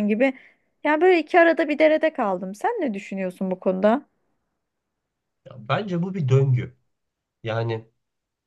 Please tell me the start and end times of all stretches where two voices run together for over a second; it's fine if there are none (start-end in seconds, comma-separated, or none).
none